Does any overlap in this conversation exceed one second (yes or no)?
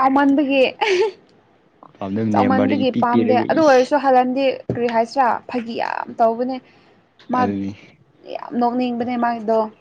yes